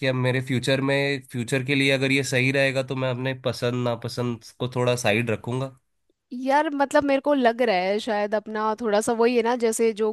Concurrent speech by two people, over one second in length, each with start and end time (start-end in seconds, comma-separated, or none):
none